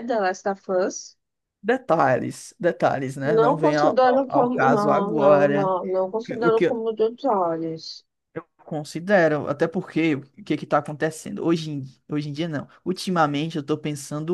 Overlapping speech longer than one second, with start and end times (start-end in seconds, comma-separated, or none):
3.2-5.7